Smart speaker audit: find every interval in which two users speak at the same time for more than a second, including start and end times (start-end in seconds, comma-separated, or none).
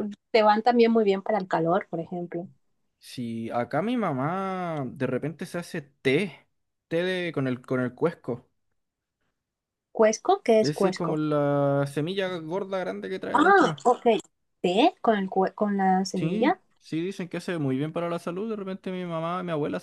none